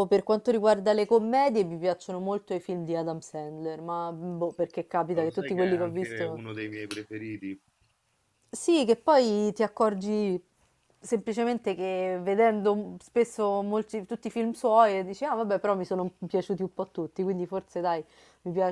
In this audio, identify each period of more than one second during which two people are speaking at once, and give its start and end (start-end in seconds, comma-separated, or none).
5.1-6.4